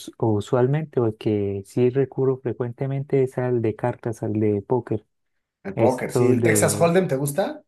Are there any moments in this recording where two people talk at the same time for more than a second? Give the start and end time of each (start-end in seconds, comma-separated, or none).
5.7-6.9